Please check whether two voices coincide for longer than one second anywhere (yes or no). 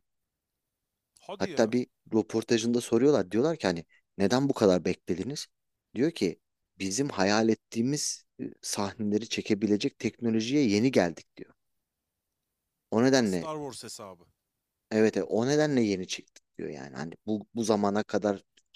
no